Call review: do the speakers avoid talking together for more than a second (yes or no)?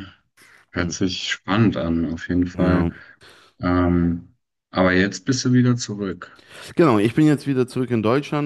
yes